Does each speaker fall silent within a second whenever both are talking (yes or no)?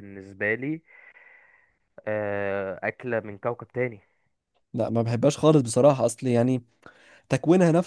yes